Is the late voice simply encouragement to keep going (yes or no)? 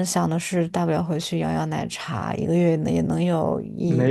no